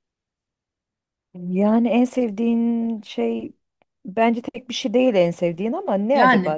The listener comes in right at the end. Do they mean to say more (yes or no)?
yes